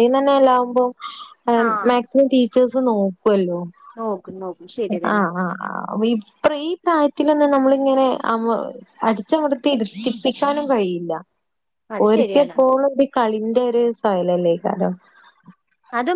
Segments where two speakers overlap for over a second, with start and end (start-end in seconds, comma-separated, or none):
none